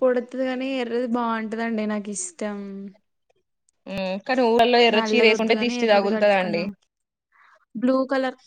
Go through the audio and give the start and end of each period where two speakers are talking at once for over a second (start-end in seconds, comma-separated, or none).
4.9-6.6